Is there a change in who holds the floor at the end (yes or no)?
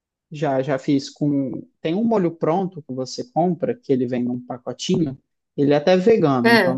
no